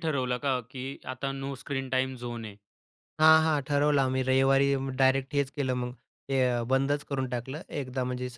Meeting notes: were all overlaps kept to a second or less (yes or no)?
yes